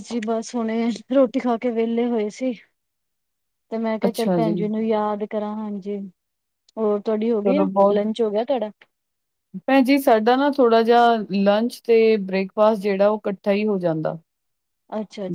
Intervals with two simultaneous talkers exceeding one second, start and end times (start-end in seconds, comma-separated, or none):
none